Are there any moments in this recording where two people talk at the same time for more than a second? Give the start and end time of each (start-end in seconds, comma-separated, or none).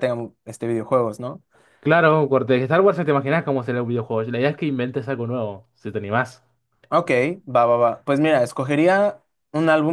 none